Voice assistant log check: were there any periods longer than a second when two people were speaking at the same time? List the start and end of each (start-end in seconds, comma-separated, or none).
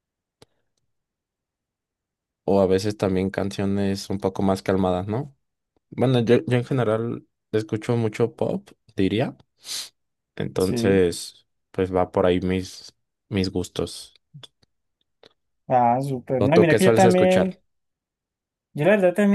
16.4-17.6